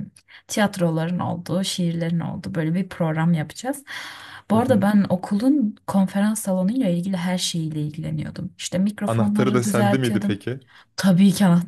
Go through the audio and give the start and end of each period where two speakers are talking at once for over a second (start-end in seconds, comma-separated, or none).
9.1-10.4